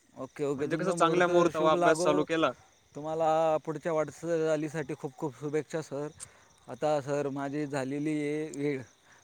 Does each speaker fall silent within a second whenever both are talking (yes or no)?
no